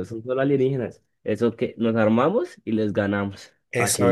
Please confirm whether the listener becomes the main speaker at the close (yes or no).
yes